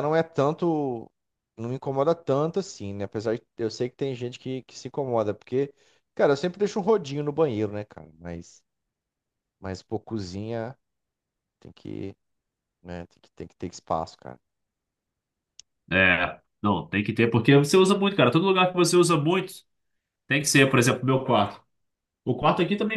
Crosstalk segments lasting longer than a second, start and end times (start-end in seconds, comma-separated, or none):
none